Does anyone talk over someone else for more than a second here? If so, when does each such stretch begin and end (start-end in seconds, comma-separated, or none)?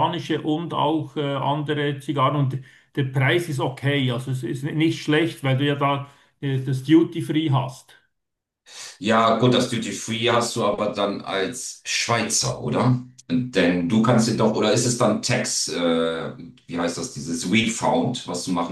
none